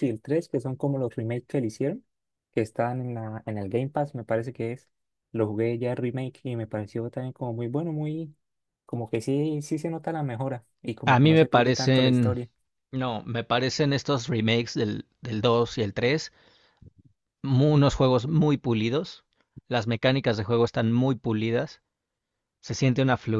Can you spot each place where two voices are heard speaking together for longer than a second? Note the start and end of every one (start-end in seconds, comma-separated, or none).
11.1-12.4